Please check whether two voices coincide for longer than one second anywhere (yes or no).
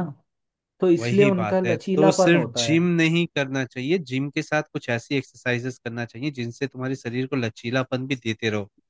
yes